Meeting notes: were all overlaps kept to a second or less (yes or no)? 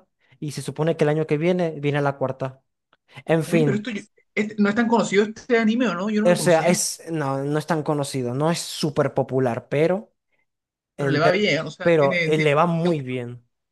no